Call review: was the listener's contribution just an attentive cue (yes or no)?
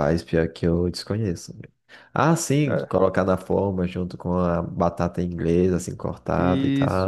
no